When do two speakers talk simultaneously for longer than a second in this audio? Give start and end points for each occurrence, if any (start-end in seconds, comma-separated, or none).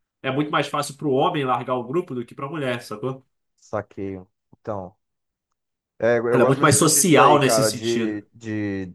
6.3-8.2